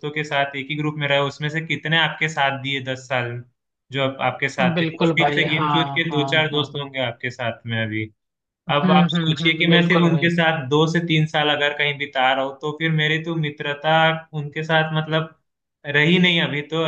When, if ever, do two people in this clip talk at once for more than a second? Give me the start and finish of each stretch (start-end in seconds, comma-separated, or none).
4.7-6.8, 8.7-10.3